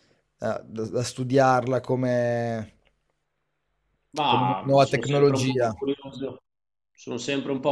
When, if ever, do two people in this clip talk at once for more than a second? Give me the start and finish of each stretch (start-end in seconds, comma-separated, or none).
4.3-5.7